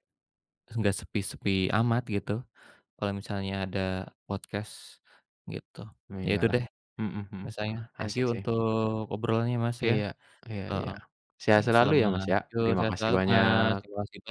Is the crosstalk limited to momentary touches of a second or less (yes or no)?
no